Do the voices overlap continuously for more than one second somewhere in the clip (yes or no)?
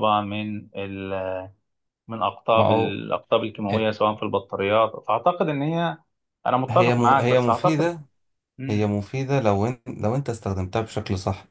yes